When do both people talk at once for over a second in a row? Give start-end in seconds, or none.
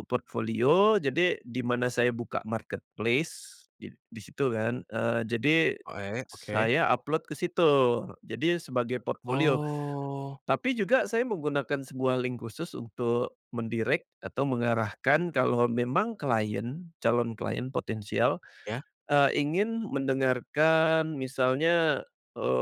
none